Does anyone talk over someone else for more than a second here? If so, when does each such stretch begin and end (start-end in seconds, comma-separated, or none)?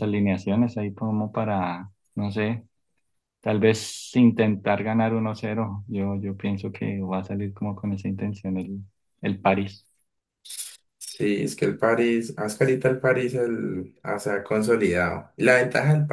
none